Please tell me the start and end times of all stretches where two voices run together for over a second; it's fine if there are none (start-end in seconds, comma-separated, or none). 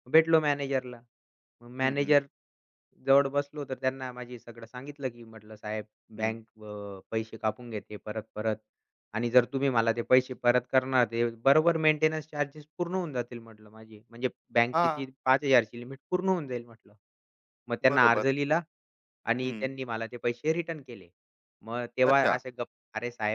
none